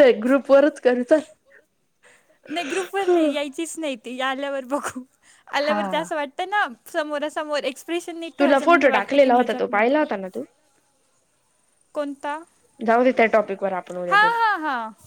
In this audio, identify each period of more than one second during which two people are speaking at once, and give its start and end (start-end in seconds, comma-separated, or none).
8.4-10.1